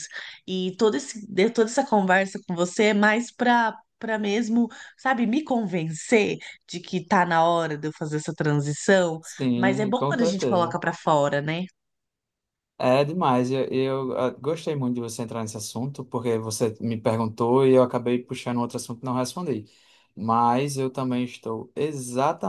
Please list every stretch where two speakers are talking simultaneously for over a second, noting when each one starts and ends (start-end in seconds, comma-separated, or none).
9.2-10.8